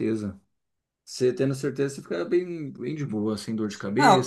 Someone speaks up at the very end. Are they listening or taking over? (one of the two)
taking over